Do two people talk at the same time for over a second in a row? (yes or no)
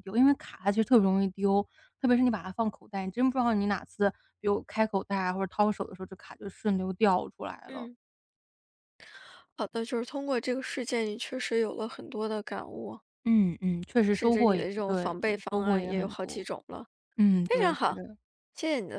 yes